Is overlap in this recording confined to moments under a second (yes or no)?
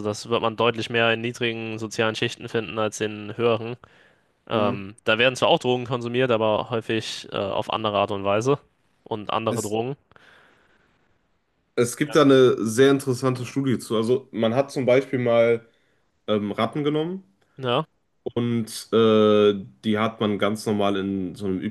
yes